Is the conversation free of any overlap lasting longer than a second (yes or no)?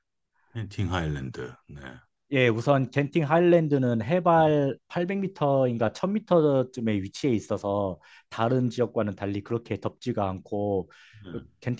yes